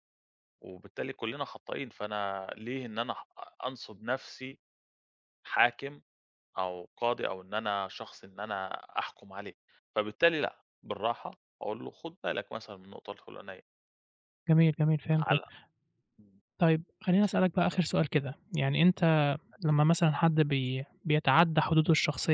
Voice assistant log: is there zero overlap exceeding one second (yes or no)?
yes